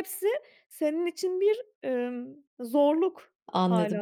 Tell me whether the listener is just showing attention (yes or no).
no